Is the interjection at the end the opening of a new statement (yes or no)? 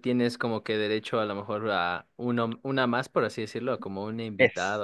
yes